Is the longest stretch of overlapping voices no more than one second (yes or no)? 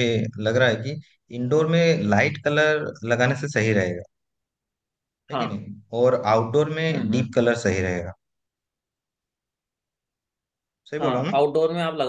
yes